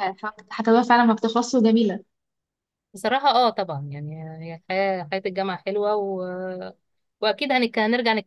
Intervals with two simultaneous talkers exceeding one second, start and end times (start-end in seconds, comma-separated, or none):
none